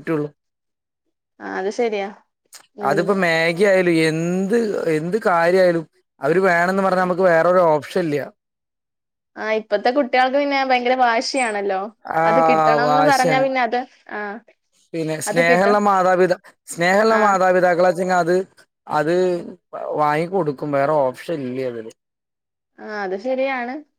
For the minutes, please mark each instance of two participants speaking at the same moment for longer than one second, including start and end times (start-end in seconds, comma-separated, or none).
none